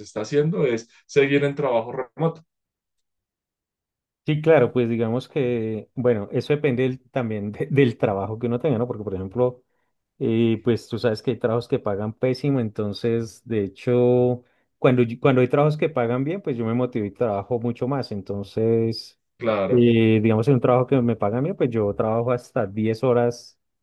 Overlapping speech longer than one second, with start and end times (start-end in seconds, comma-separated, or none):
none